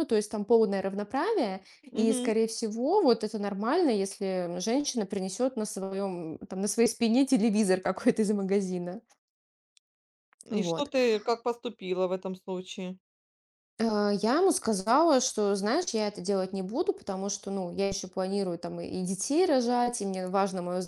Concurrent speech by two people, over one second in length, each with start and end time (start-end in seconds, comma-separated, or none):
none